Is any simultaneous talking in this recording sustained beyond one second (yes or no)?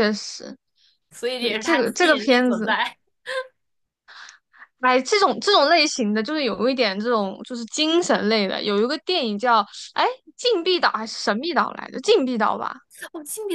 yes